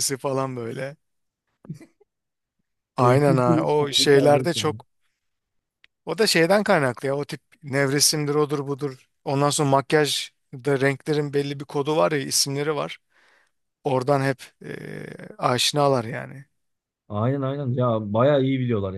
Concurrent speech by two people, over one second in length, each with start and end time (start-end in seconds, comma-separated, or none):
3.0-4.5